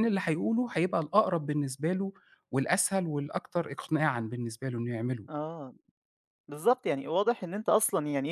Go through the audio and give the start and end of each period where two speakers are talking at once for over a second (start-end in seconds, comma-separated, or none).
none